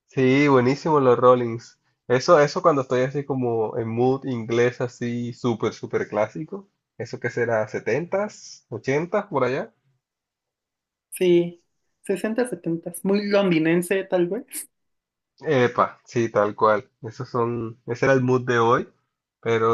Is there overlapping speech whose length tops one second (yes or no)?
no